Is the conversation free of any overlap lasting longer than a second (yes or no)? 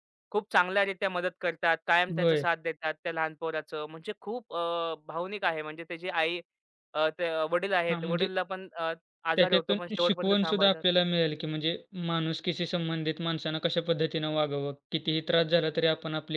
no